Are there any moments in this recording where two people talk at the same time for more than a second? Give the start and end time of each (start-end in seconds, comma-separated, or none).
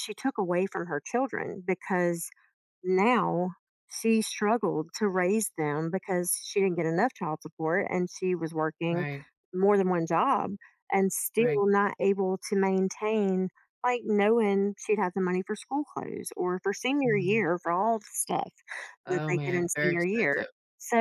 19.1-20.5